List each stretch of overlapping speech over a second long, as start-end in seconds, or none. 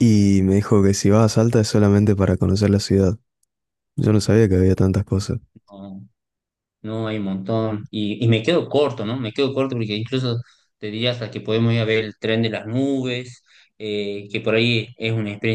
none